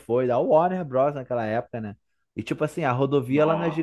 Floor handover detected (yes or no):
no